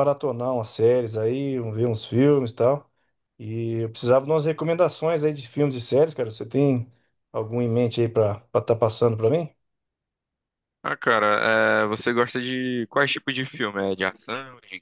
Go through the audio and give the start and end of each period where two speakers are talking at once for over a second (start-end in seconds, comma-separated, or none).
none